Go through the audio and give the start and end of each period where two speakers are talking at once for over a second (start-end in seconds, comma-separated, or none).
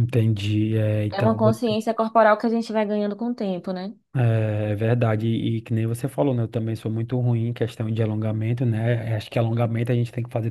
none